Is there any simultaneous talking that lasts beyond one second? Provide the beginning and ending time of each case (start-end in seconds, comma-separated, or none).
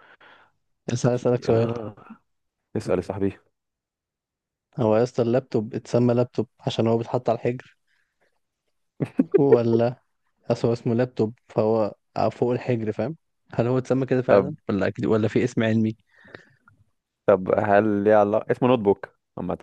none